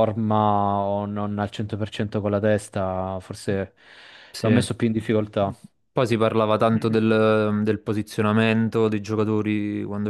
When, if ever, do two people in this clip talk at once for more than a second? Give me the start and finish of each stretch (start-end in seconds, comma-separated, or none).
none